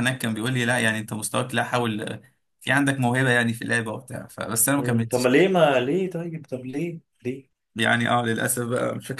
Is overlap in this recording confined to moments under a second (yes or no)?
yes